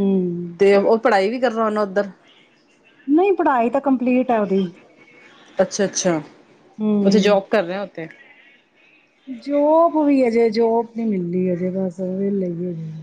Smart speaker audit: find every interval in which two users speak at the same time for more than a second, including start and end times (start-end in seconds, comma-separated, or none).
none